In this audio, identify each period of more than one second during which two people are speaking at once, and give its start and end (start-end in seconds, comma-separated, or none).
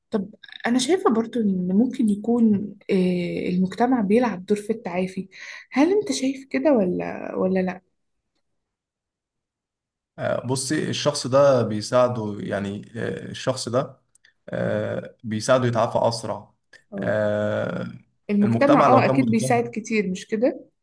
18.4-19.7